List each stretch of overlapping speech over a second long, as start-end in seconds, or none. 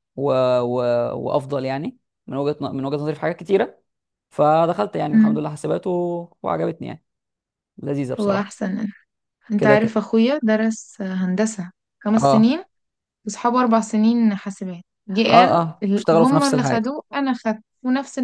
15.3-16.9